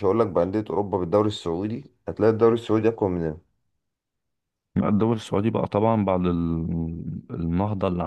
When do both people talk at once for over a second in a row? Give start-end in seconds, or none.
none